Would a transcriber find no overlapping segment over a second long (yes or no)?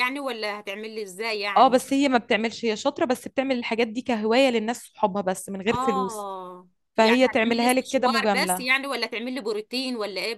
no